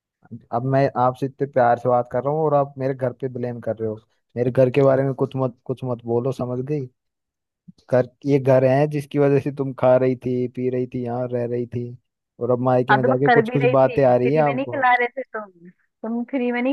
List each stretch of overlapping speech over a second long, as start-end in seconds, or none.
12.9-14.9